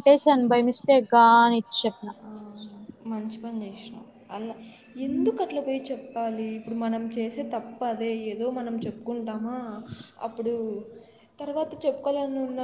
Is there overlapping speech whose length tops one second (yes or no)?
no